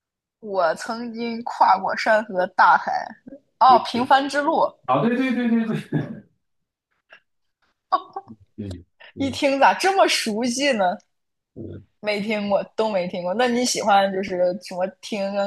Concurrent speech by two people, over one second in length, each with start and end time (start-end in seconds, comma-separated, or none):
none